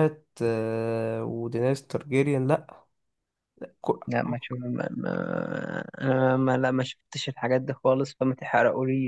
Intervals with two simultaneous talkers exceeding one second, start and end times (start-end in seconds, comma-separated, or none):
none